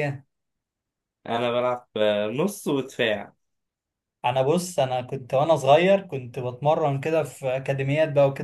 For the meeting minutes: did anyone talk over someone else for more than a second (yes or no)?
no